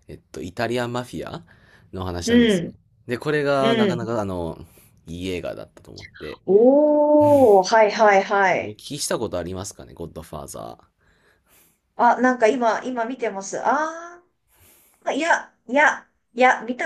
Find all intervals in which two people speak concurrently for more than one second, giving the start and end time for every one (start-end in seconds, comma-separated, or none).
none